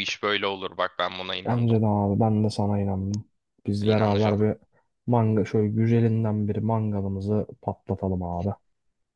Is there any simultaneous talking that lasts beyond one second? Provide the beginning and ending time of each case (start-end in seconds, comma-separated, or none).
none